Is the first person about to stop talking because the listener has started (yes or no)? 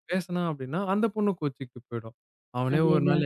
no